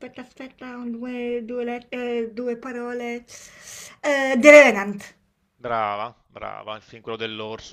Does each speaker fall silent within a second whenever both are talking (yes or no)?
yes